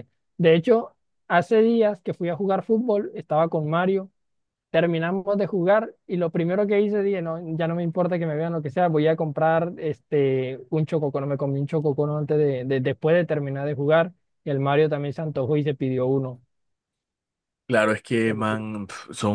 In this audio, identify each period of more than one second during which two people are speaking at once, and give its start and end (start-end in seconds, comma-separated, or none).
none